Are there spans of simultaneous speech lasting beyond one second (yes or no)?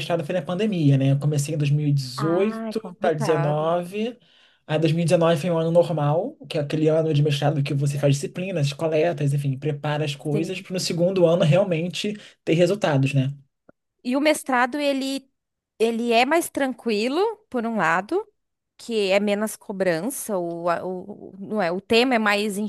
yes